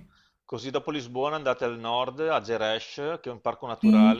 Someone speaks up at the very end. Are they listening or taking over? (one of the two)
listening